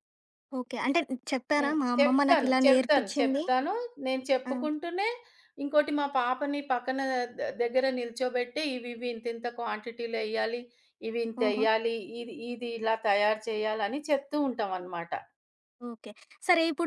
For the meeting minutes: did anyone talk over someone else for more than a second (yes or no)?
yes